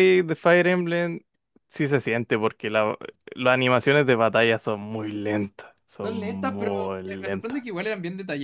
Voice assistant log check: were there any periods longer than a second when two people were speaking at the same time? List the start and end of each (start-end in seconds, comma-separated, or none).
6.0-7.7